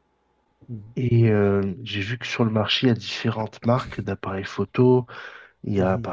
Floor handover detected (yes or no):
no